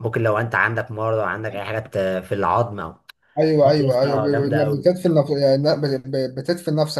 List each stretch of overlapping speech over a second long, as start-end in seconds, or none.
3.6-4.9